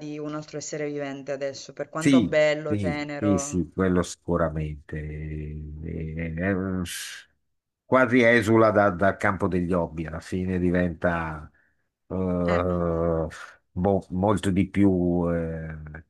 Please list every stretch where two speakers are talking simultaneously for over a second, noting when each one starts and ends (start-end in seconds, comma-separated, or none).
2.0-3.6